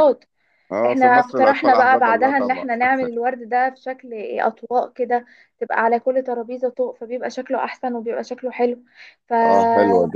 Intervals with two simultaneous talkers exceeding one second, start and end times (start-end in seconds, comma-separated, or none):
0.8-2.6